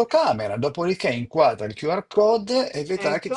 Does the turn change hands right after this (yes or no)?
no